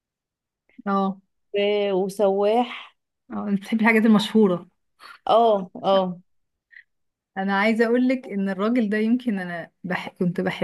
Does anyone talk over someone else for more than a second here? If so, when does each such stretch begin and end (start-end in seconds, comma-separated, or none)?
none